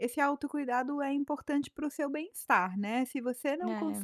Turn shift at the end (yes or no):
no